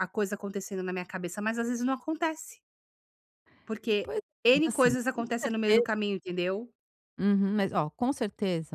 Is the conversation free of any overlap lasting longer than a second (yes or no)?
no